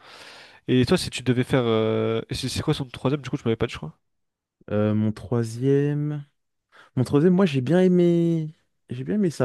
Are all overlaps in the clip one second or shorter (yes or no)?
yes